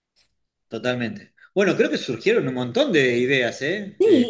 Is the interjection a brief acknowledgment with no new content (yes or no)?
no